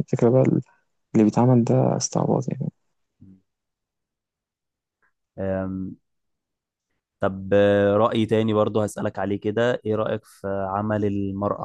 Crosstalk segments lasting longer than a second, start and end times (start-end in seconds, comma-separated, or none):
none